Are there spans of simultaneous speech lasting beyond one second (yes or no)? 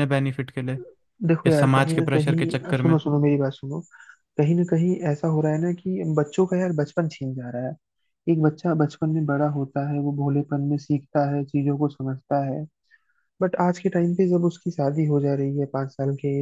yes